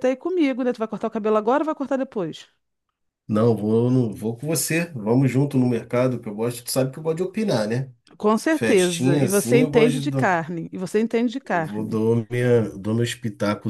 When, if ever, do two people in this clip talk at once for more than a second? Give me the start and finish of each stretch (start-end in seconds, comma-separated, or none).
8.5-10.4